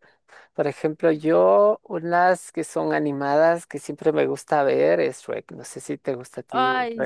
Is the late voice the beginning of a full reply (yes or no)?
yes